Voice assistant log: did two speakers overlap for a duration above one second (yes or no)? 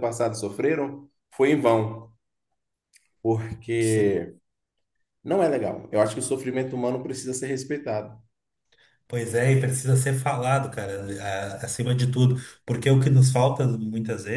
no